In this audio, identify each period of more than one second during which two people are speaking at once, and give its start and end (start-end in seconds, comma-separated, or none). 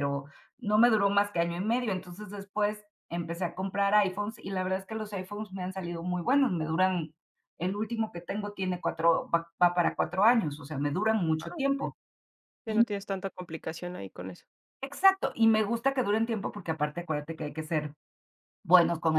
none